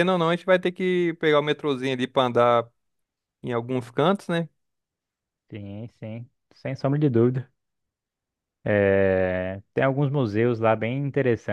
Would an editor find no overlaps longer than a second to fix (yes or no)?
yes